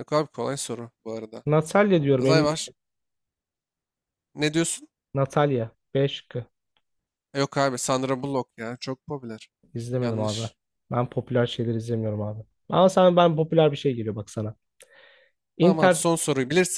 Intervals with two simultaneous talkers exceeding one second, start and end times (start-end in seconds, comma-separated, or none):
none